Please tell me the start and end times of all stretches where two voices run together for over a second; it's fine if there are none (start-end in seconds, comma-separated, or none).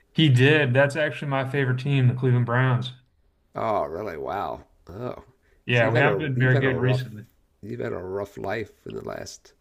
5.7-7.0